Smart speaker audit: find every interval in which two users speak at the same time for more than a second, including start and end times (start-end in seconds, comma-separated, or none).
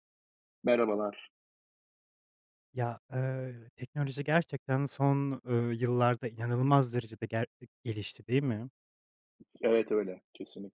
none